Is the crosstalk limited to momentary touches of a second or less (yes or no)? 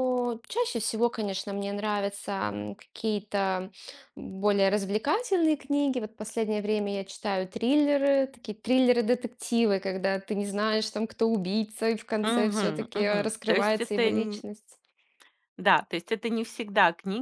no